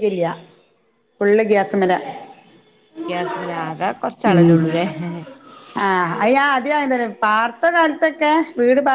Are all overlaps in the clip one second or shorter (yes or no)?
yes